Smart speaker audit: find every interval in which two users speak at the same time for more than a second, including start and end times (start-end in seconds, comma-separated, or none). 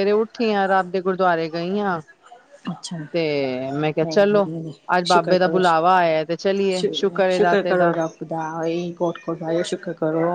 none